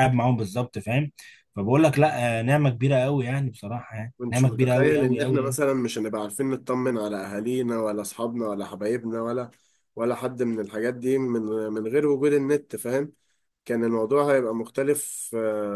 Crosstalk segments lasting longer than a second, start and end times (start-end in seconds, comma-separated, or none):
4.2-5.6